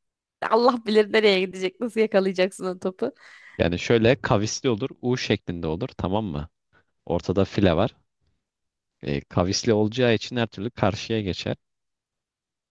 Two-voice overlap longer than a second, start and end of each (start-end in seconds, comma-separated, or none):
none